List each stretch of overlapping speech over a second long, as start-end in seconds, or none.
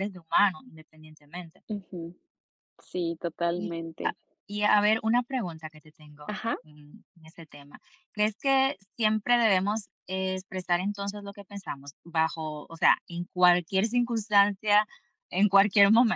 none